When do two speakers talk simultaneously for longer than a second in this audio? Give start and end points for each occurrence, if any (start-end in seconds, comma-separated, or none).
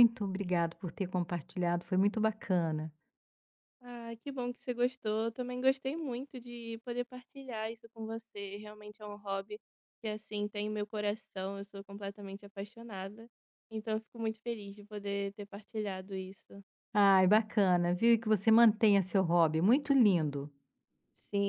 none